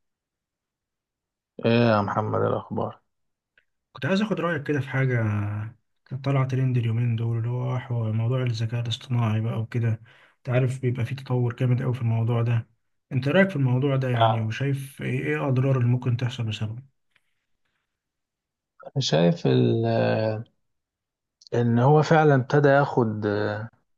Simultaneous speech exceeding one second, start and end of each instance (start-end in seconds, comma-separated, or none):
none